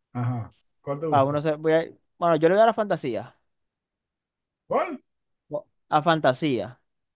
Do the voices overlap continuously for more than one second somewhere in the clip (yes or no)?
no